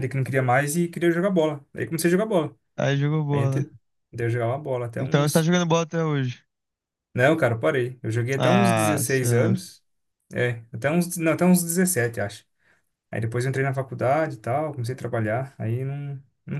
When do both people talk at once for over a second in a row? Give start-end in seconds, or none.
8.4-9.6